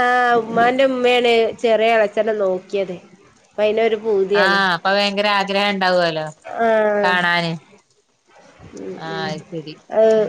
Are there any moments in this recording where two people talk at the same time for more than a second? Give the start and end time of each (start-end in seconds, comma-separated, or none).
none